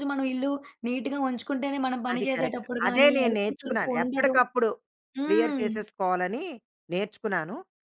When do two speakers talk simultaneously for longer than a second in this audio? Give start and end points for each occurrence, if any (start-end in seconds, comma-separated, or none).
2.1-4.3